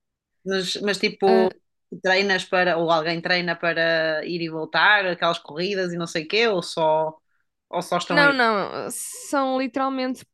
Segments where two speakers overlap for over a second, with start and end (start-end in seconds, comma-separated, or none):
none